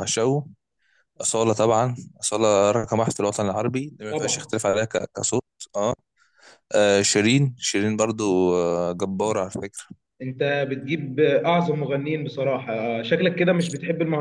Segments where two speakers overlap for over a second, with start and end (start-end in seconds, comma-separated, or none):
none